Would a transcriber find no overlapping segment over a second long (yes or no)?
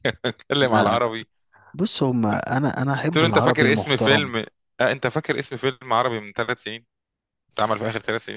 no